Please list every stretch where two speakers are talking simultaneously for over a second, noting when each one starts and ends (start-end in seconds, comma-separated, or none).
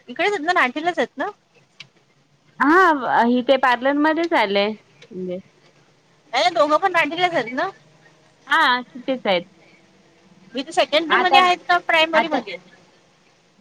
none